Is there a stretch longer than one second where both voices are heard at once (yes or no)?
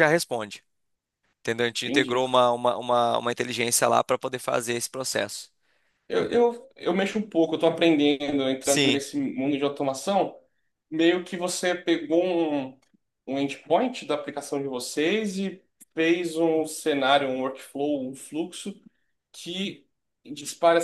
no